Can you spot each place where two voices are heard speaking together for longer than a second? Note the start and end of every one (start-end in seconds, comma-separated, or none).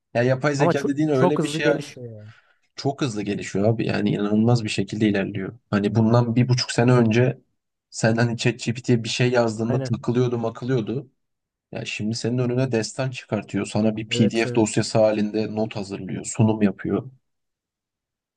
0.6-1.9